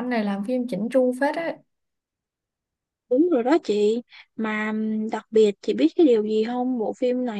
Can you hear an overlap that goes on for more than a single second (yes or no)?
no